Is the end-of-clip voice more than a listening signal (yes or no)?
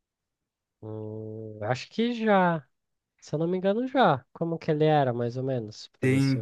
yes